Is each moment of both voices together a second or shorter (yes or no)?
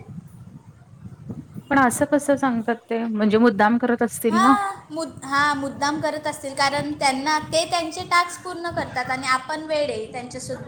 yes